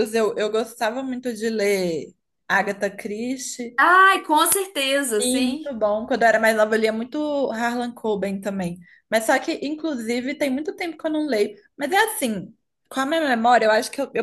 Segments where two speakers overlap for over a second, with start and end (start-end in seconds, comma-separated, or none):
none